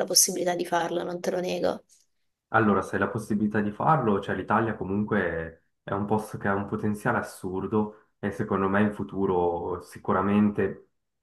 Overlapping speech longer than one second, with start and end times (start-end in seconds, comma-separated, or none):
none